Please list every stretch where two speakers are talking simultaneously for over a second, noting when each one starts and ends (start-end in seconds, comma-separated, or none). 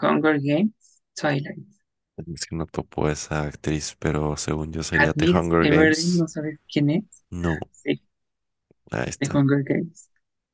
5.0-6.2